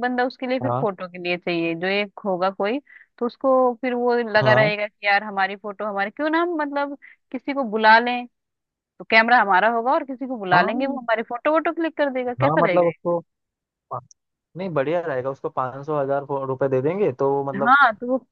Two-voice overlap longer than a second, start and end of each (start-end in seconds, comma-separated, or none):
none